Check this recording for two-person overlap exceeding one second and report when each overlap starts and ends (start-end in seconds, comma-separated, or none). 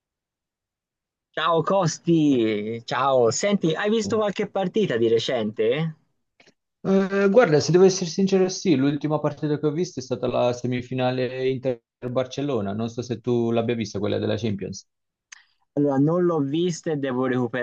none